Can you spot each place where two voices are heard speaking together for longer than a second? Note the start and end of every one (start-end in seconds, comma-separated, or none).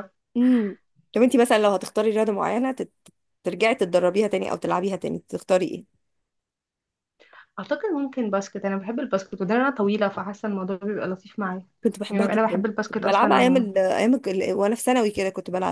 12.1-13.7